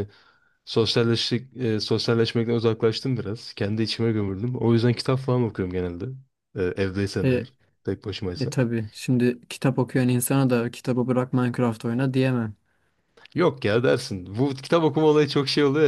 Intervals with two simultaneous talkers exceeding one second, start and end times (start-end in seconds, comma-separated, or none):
none